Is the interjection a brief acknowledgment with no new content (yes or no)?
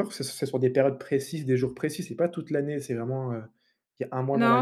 no